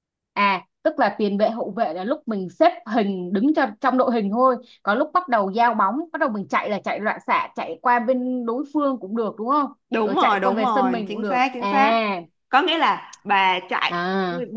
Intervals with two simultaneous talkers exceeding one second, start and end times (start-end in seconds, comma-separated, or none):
9.9-11.7